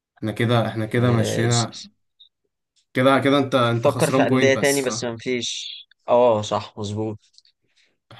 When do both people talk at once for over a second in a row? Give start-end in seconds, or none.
3.7-5.1